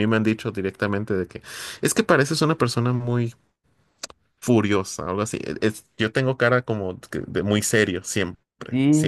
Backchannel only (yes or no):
no